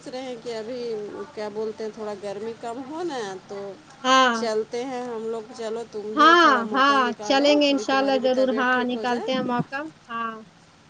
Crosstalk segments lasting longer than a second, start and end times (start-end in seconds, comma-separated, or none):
6.2-9.3